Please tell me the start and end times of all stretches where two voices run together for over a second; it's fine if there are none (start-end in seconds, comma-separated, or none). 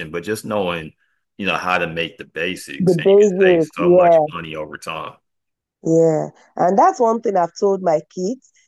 2.8-4.3